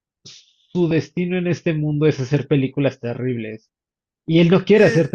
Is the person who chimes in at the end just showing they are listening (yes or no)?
yes